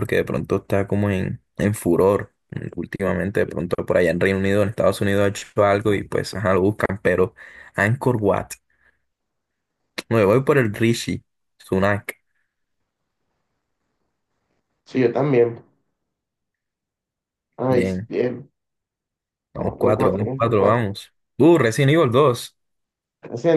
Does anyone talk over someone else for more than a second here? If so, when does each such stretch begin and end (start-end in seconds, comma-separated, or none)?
19.6-20.9